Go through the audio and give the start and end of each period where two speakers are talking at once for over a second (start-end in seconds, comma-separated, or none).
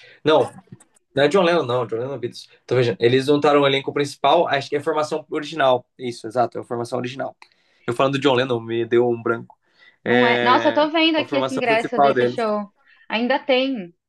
10.1-12.4